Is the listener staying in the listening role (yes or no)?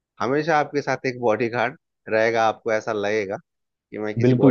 no